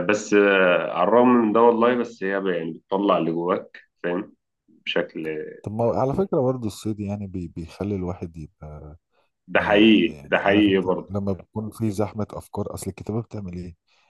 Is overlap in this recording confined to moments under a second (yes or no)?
no